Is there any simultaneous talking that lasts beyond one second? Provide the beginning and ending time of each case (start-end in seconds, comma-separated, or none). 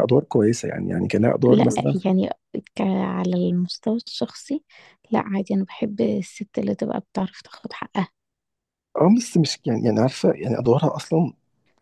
none